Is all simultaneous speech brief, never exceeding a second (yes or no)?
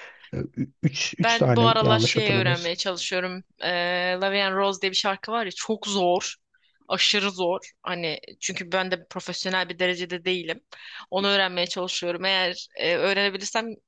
no